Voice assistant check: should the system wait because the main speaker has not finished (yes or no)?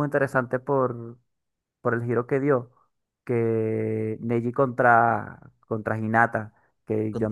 yes